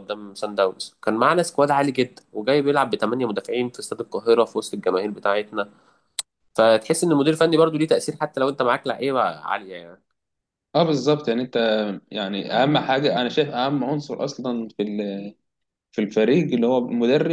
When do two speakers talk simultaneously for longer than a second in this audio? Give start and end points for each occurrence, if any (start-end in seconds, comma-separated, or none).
none